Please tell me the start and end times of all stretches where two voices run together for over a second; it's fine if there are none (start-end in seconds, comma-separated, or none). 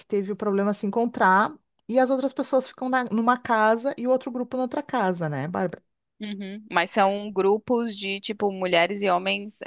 none